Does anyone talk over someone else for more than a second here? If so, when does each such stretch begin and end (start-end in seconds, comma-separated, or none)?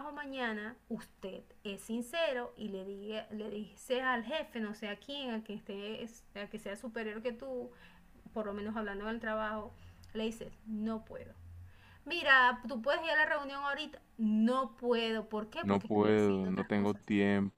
15.6-17.0